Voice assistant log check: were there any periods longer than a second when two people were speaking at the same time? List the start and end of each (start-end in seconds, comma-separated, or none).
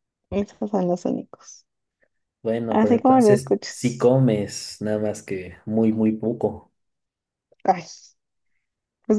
2.7-4.1